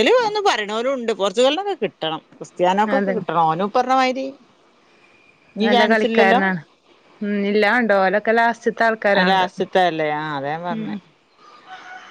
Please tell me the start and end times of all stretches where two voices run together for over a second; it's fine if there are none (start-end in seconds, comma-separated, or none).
none